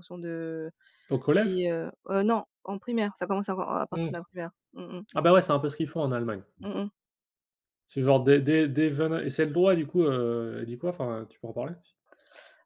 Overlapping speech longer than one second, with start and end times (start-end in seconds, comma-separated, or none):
none